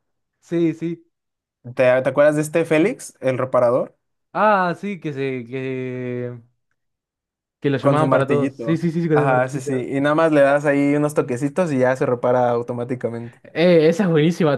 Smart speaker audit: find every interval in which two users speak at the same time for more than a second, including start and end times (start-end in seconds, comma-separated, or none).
7.8-9.7